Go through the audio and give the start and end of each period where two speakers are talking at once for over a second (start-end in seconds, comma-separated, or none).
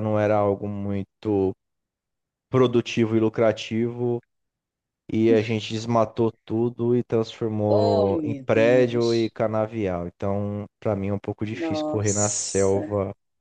7.7-9.3, 11.6-12.8